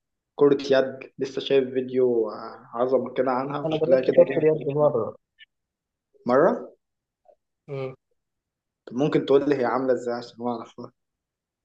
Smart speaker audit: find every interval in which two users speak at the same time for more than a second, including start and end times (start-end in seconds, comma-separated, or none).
3.6-5.0